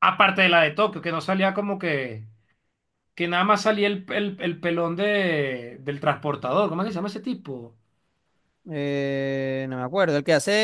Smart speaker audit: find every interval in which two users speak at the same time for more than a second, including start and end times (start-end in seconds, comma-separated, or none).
none